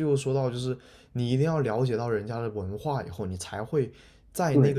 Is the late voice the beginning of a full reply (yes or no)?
no